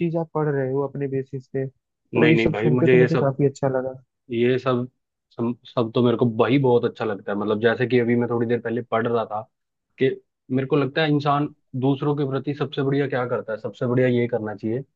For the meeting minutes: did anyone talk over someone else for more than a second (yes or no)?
yes